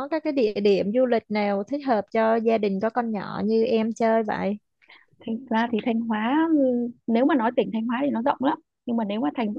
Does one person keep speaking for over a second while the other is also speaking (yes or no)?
no